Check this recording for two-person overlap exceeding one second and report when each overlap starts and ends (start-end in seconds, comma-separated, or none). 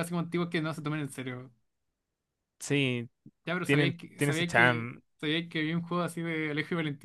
3.6-5.0